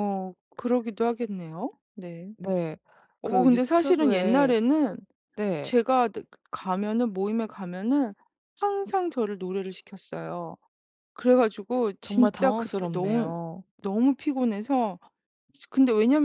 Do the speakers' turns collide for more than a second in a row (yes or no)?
yes